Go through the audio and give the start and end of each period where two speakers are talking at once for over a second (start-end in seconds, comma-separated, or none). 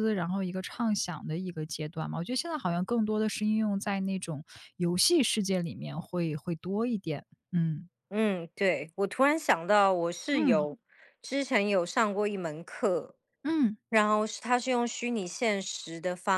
none